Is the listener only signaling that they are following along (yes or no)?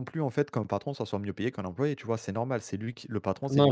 no